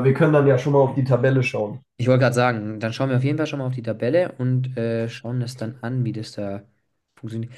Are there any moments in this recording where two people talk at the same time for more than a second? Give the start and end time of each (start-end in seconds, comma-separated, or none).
none